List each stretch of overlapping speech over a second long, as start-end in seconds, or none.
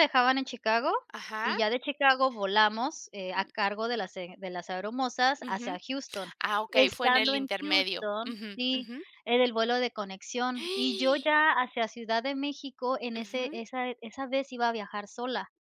6.7-9.0